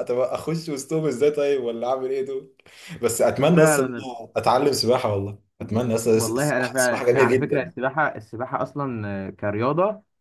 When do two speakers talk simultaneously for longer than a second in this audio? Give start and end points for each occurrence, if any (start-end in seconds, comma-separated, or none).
6.1-7.7